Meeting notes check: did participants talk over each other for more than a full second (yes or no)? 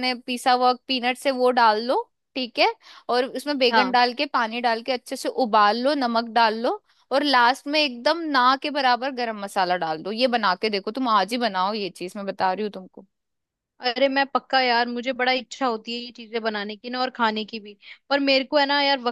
no